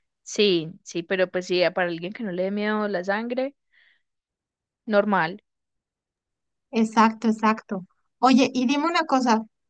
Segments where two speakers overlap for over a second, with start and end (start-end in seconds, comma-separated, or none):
none